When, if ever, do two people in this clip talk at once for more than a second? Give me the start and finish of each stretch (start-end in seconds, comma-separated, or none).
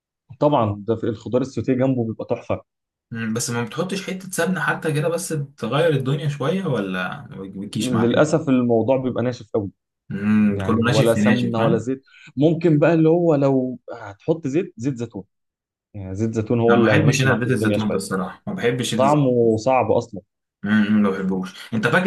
10.5-11.8, 16.7-18.0